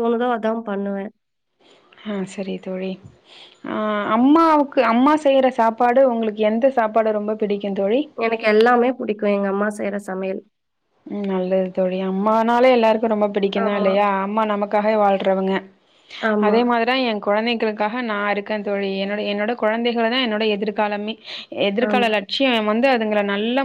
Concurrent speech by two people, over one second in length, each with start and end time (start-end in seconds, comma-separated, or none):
none